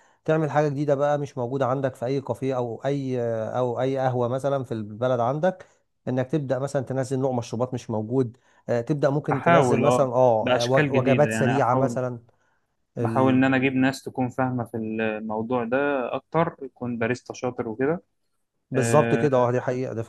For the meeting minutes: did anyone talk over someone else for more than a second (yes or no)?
yes